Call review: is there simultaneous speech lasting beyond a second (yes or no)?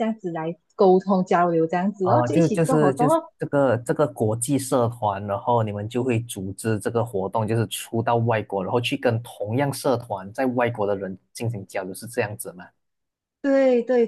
yes